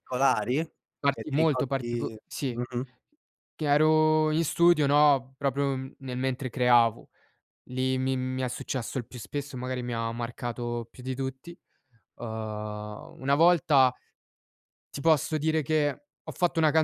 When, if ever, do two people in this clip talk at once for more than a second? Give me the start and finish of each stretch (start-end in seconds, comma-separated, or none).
1.1-2.5